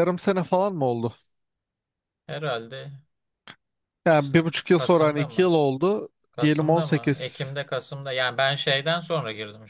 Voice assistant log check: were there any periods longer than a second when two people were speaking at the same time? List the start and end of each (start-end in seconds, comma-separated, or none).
4.2-5.5, 6.3-7.6